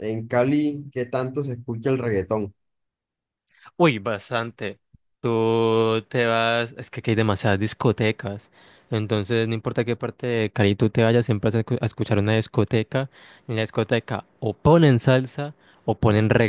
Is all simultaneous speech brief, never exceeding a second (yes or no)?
yes